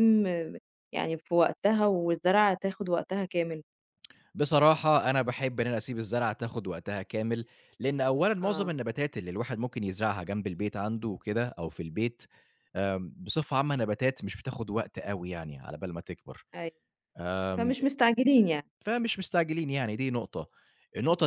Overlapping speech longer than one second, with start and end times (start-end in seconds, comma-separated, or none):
none